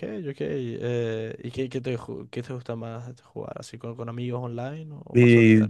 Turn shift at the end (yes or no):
yes